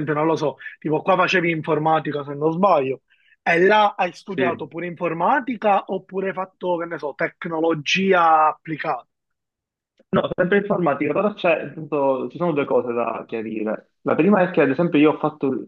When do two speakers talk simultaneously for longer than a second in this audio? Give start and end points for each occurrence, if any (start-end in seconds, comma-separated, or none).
none